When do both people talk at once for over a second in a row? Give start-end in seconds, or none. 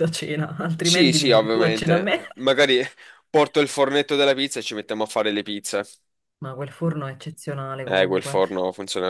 0.8-2.2